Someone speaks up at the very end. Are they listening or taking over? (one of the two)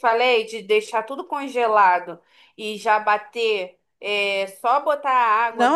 taking over